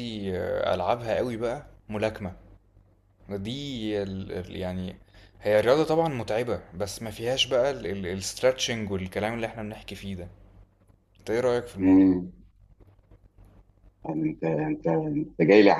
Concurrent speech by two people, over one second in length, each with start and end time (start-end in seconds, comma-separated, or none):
none